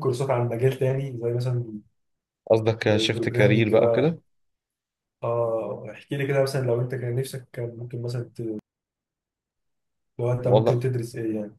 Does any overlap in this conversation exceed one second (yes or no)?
yes